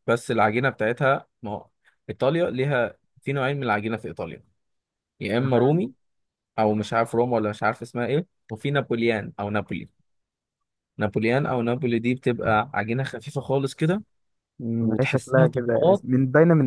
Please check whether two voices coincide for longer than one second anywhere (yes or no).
yes